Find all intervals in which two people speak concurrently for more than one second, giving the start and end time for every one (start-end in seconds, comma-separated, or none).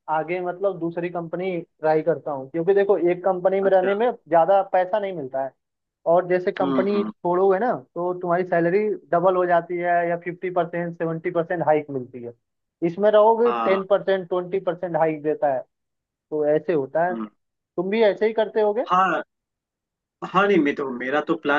none